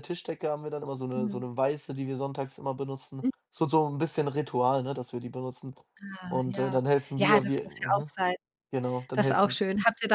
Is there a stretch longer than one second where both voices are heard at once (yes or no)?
yes